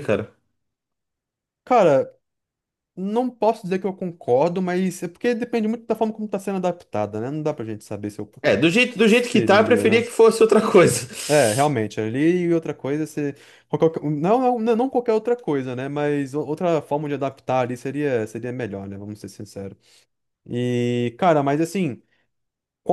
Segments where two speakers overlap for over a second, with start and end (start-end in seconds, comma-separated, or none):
8.8-10.1